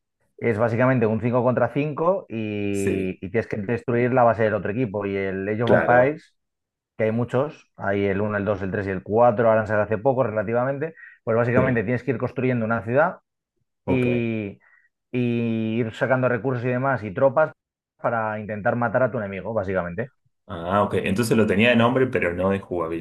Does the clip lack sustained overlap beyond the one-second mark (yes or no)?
yes